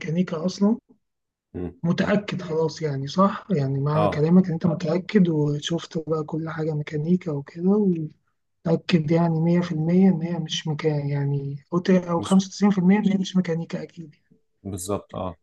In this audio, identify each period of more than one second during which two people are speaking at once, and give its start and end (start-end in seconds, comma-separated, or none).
none